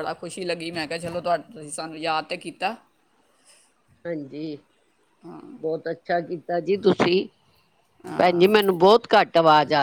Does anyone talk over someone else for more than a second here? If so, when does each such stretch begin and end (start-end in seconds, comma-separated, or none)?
none